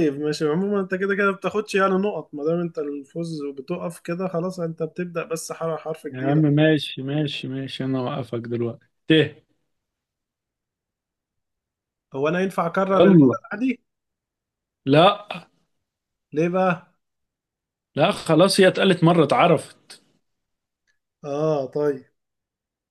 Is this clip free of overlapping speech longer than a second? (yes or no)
yes